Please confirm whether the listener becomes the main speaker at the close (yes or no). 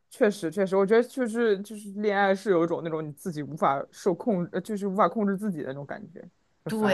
yes